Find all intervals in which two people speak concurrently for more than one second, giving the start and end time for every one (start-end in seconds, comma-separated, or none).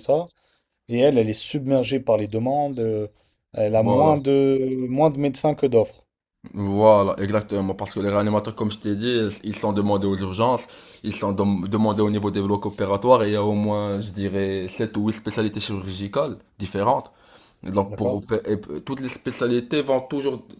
none